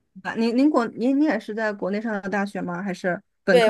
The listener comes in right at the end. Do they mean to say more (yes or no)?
yes